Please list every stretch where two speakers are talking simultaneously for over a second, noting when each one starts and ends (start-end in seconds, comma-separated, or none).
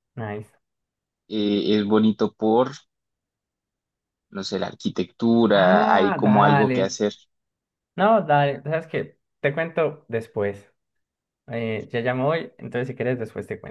5.5-7.0